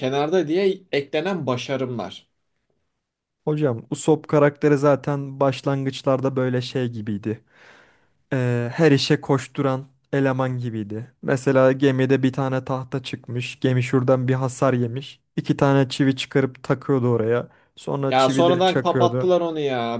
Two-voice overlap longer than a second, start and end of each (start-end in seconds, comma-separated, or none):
18.0-19.3